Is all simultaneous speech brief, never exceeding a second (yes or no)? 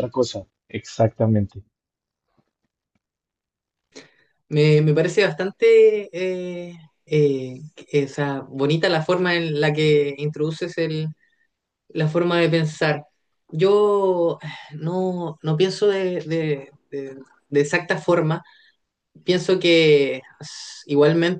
yes